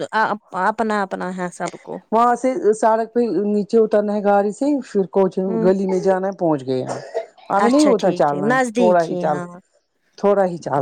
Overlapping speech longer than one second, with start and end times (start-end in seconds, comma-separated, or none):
7.6-9.4